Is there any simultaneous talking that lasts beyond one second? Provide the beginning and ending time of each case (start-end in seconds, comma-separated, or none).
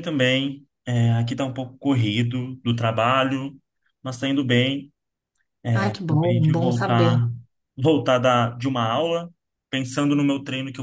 5.9-7.2